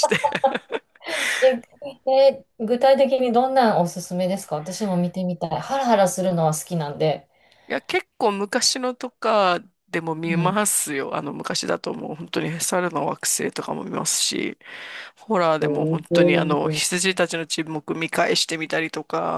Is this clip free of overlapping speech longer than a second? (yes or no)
no